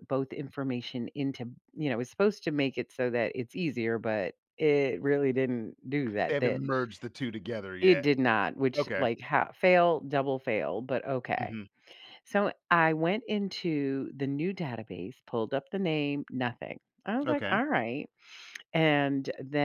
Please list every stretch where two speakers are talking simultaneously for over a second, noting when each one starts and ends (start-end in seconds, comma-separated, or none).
none